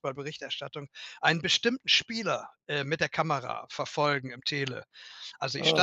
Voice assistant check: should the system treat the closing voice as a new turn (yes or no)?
no